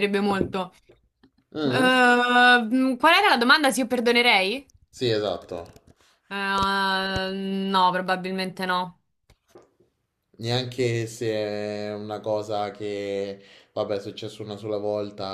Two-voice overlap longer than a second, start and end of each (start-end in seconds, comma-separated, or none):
none